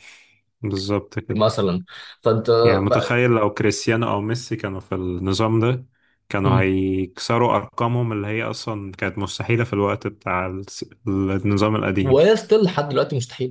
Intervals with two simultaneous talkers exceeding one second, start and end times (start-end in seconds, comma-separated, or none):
none